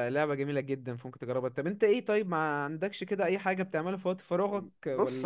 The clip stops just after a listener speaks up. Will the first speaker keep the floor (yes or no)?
no